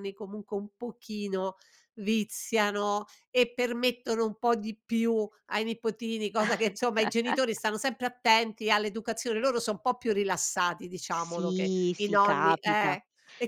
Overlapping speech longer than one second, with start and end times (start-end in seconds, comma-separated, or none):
11.1-13.0